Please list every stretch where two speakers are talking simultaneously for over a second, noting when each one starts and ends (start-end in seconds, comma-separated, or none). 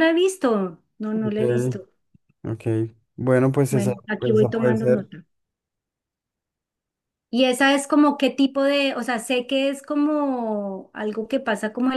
3.7-5.1